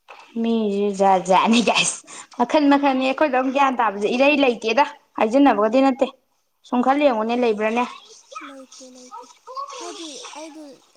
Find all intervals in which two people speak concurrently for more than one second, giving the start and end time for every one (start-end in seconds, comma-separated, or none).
none